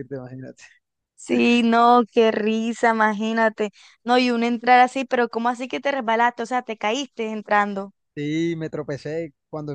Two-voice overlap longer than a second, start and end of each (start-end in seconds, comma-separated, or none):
none